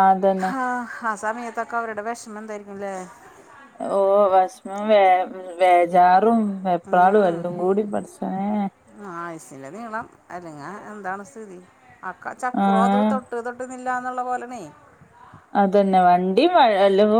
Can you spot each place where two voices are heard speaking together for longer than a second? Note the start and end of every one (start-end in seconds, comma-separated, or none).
none